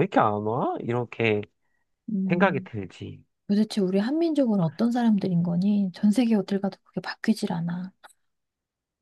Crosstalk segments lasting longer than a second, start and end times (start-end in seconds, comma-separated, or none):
none